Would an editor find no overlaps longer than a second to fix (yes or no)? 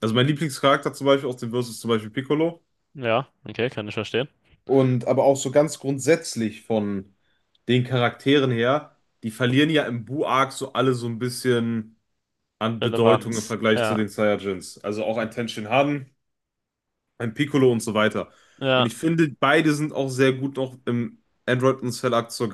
no